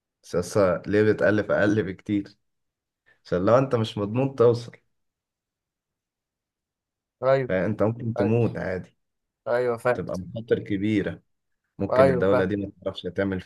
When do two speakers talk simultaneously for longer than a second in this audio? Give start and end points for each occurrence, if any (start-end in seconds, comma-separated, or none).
none